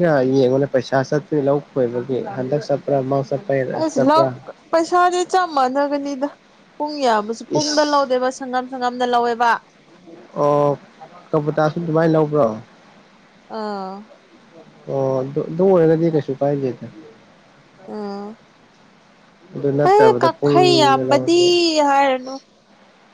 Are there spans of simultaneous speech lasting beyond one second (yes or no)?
yes